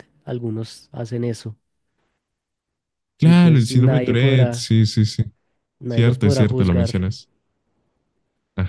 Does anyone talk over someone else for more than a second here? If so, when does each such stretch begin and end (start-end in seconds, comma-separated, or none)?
3.2-4.7, 5.9-7.1